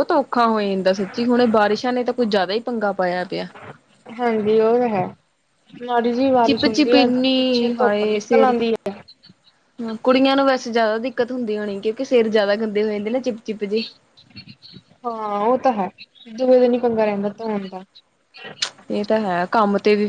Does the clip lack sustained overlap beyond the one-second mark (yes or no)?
no